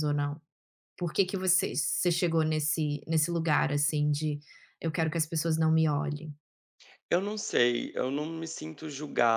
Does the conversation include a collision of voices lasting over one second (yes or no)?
no